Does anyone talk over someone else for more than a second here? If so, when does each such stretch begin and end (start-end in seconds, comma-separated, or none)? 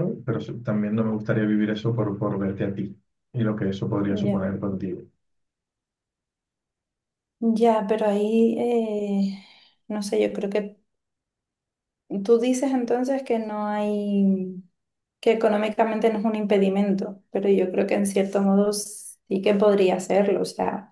none